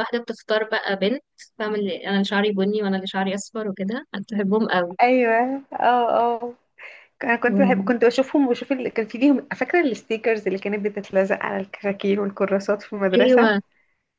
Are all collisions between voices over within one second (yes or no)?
yes